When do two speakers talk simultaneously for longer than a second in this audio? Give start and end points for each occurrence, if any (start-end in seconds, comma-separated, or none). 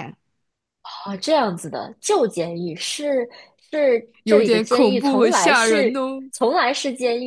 4.2-5.9